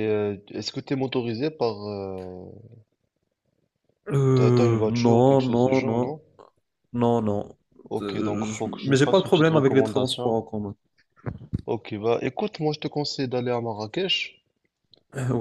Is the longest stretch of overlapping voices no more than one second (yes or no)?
no